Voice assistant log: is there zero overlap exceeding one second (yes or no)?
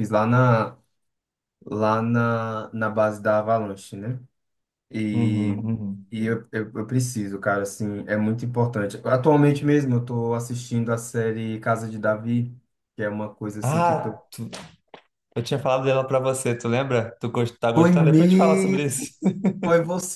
no